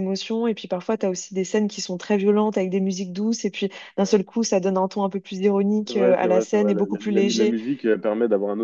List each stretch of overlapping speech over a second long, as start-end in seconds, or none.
5.9-7.6